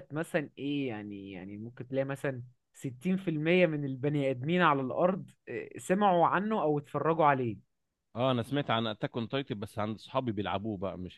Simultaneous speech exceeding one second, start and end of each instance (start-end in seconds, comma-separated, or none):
none